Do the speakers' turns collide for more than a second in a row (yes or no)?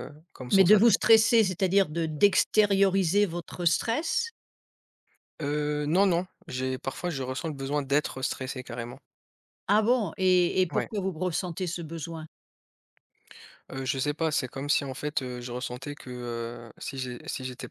no